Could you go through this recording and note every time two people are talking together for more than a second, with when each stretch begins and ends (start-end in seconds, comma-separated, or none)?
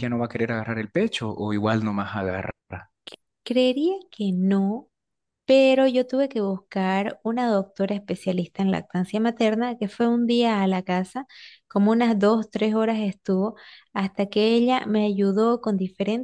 none